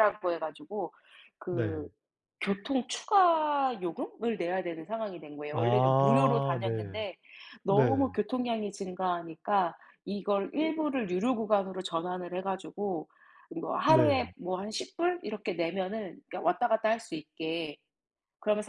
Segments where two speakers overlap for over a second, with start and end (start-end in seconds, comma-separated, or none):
5.5-7.0